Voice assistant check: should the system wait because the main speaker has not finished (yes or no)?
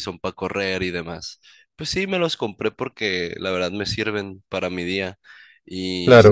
yes